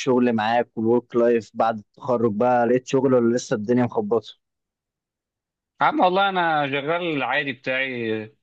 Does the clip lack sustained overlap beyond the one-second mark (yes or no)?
yes